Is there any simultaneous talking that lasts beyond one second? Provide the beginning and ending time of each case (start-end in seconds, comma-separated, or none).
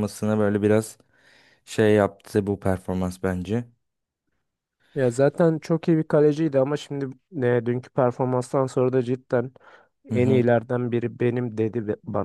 none